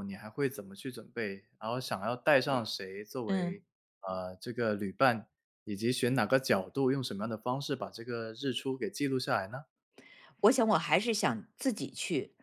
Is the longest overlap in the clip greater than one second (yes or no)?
no